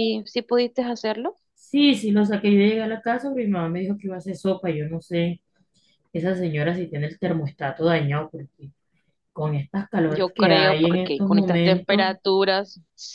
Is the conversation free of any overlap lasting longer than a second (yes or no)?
no